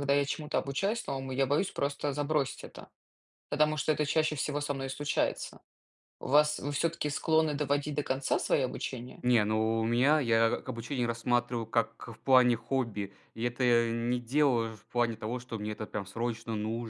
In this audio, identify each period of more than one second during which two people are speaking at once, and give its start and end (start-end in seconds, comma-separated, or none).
none